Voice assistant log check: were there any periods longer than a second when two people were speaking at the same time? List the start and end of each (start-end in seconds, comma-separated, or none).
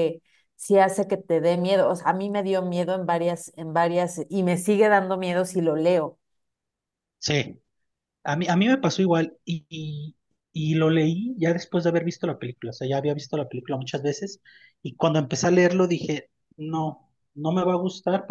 none